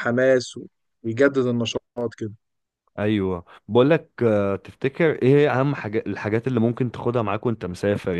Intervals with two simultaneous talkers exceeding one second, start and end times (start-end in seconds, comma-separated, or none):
none